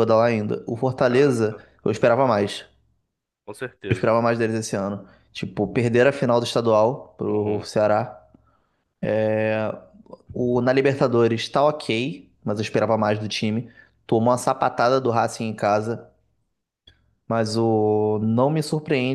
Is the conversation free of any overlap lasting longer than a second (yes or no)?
yes